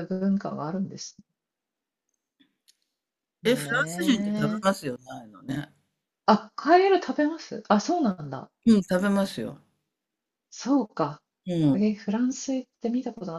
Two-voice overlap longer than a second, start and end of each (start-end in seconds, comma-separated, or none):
3.4-4.7